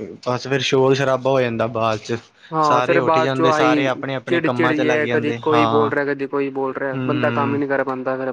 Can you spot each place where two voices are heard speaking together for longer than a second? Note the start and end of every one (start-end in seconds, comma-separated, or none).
2.7-5.9